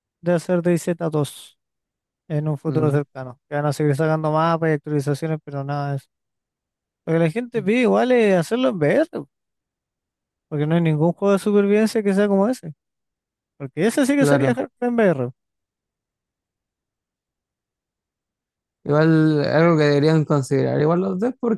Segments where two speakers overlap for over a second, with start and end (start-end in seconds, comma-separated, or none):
none